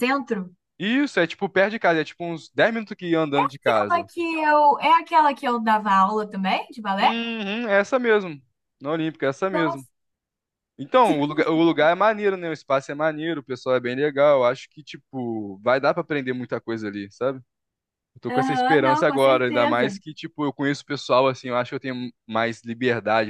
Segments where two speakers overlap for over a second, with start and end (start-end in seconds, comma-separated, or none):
18.3-19.9